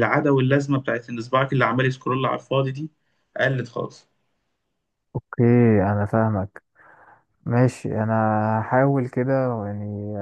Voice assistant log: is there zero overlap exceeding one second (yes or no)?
yes